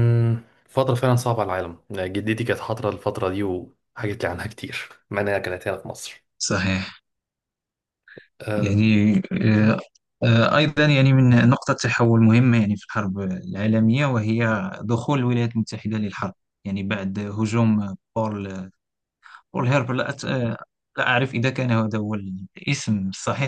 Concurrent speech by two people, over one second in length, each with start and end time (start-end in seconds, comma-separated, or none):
none